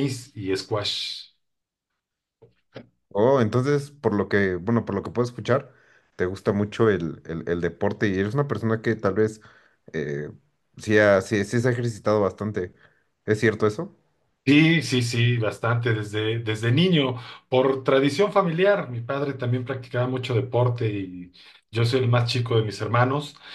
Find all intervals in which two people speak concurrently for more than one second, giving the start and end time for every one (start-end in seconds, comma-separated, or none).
none